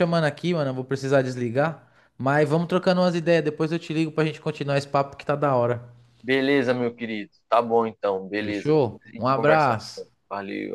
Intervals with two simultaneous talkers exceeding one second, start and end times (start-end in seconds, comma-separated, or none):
8.4-9.8